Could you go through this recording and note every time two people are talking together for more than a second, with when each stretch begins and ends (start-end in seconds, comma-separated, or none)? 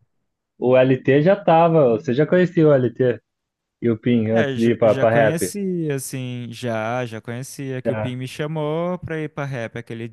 4.3-5.5